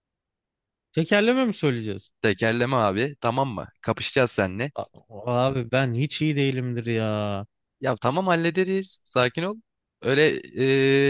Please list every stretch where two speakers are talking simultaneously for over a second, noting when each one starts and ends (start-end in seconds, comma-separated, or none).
none